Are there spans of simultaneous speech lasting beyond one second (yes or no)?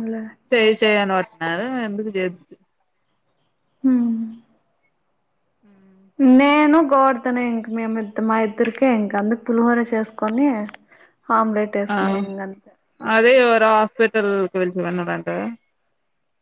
no